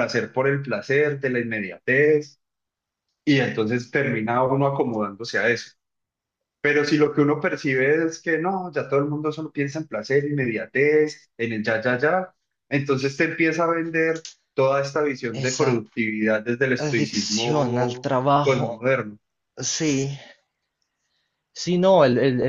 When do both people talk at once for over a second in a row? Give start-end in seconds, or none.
16.8-18.8